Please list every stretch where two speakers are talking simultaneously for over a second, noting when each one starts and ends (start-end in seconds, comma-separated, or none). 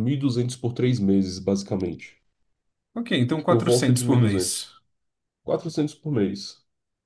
3.5-4.7